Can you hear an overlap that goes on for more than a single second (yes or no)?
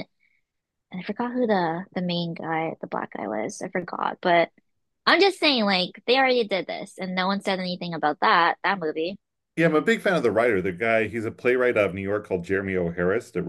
no